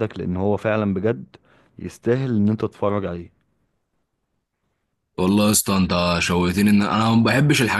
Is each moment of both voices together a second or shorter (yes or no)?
yes